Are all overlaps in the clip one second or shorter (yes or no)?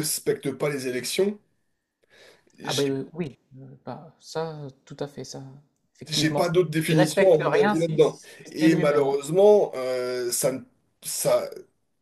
no